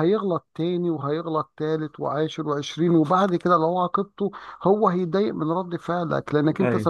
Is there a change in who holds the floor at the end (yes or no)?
no